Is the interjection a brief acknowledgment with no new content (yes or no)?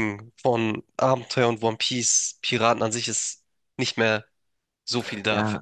no